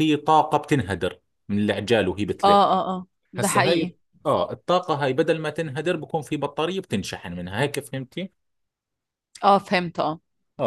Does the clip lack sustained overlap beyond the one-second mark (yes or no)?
yes